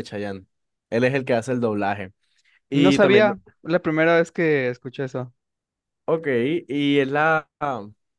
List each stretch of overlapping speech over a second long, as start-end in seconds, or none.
none